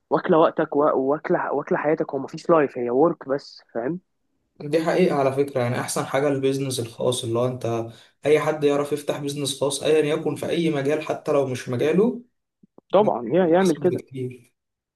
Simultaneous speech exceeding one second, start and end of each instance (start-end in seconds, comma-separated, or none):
none